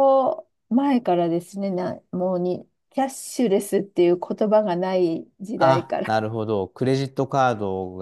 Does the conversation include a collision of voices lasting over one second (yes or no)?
no